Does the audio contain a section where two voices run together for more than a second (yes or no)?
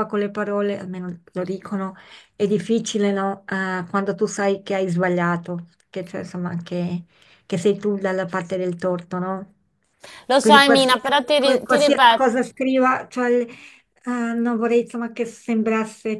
yes